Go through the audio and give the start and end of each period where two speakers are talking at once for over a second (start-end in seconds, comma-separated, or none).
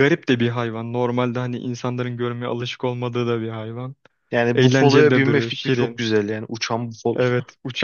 4.5-6.1